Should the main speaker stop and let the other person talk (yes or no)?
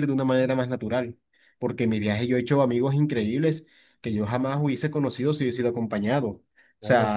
no